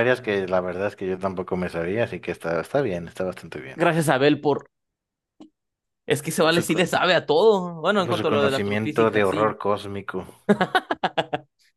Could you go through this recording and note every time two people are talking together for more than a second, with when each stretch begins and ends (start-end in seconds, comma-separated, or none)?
8.1-9.6